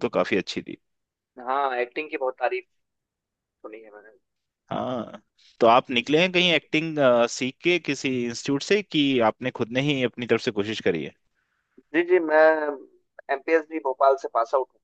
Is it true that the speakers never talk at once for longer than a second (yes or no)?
yes